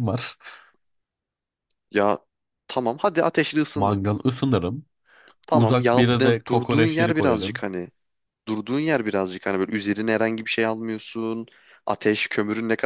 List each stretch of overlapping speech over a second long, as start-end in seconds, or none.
5.5-7.6